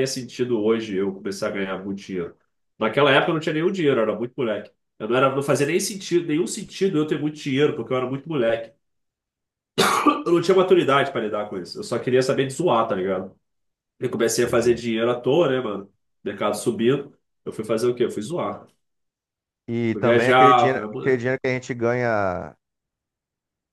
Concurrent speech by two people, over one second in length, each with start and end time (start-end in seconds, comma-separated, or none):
19.9-21.2